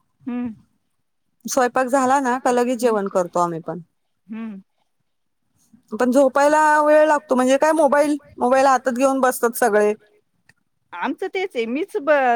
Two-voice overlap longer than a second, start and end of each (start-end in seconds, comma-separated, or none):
none